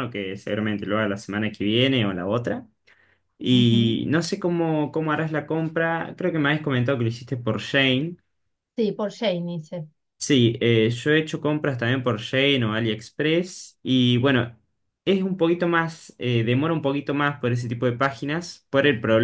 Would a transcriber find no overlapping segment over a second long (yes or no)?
yes